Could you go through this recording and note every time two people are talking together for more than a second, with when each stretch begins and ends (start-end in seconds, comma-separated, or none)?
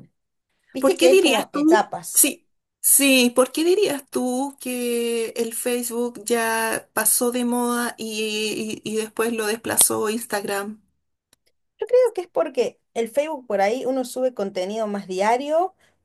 0.8-2.3